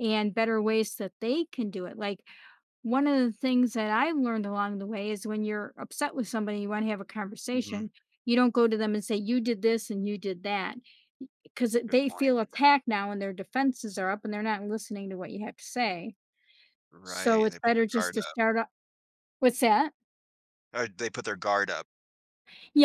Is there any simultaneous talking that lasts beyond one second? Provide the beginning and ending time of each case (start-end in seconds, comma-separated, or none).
17.0-18.4